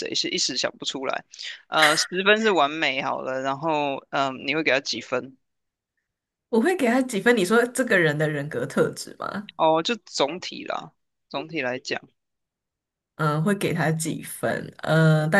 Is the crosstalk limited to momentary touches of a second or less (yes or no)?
yes